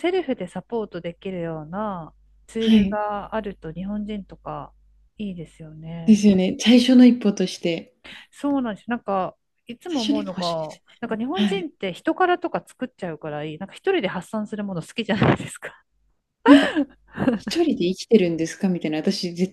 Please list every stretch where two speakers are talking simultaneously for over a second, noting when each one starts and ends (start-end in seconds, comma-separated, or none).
9.9-11.7